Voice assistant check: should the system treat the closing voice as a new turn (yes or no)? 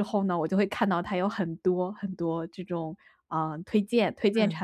no